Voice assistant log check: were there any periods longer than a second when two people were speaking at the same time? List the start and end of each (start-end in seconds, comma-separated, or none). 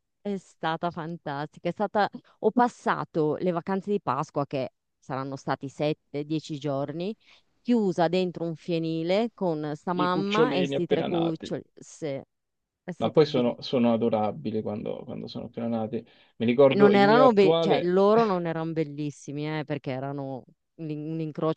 10.0-11.5, 16.8-17.9